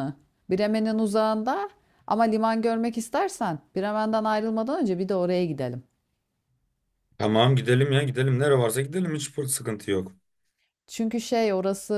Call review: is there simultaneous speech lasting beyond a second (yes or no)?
no